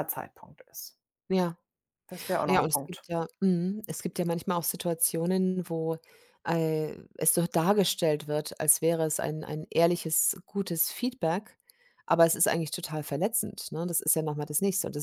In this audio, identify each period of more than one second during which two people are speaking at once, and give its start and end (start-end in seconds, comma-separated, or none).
none